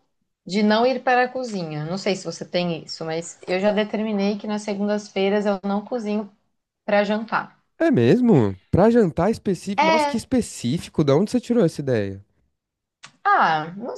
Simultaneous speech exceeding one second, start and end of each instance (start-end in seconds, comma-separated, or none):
none